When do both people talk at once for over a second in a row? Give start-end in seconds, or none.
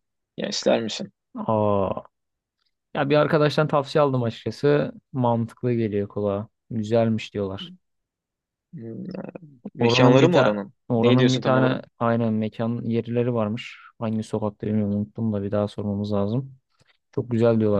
9.8-11.8